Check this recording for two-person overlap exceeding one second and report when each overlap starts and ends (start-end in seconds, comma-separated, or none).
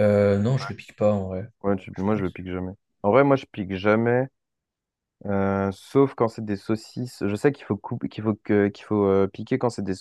none